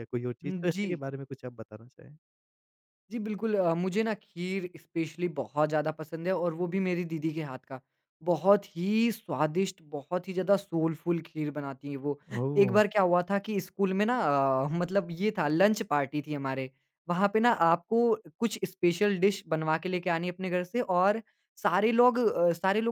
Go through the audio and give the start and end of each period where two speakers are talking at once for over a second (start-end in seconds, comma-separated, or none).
none